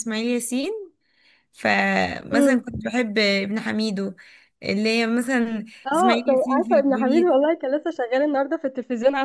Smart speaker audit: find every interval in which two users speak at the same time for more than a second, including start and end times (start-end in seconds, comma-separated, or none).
5.9-7.3